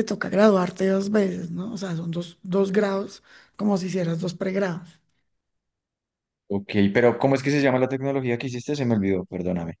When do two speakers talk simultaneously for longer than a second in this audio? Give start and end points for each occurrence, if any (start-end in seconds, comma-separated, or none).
none